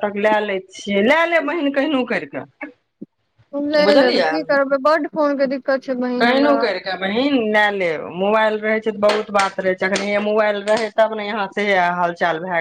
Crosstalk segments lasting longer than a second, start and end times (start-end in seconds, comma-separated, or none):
none